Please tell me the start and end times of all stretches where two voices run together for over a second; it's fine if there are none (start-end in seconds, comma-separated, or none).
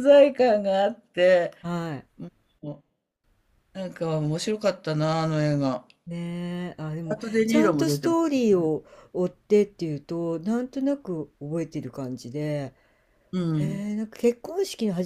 7.1-8.7